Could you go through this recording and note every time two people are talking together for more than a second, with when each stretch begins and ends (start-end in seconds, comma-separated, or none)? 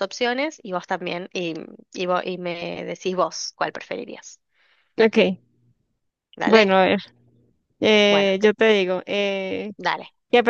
none